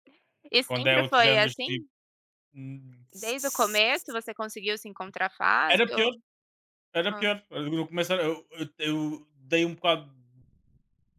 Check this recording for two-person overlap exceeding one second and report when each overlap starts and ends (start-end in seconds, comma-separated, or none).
0.7-1.9